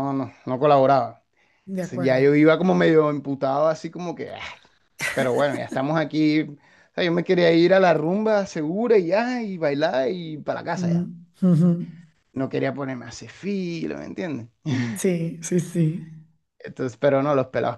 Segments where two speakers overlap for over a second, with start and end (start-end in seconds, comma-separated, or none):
none